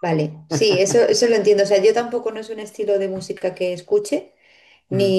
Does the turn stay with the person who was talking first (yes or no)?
yes